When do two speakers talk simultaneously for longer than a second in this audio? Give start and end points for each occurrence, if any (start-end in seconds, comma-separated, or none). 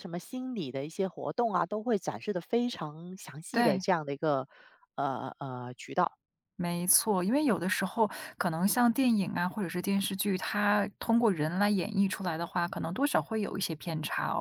none